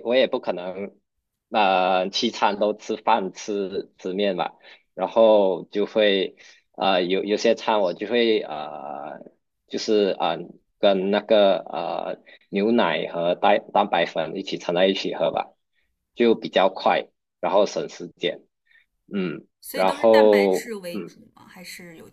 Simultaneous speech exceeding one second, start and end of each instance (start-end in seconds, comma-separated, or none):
19.6-21.2